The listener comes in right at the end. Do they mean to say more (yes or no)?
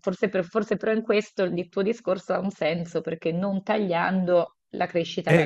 yes